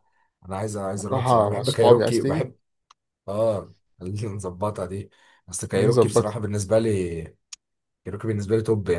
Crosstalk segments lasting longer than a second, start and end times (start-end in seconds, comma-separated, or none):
1.1-2.5